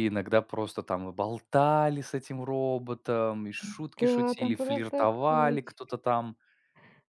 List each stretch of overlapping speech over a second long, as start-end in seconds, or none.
4.0-5.8